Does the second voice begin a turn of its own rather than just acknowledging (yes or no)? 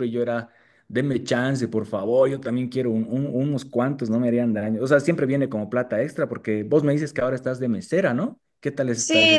yes